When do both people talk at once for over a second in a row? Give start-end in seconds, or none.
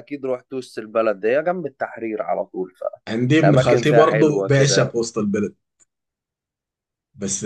3.4-5.0